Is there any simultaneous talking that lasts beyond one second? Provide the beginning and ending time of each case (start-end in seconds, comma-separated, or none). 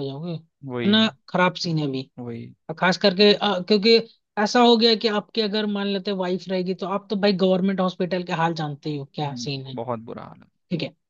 none